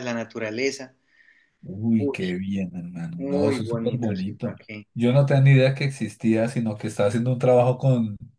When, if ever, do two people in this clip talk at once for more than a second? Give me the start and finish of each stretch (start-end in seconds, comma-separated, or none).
3.2-4.8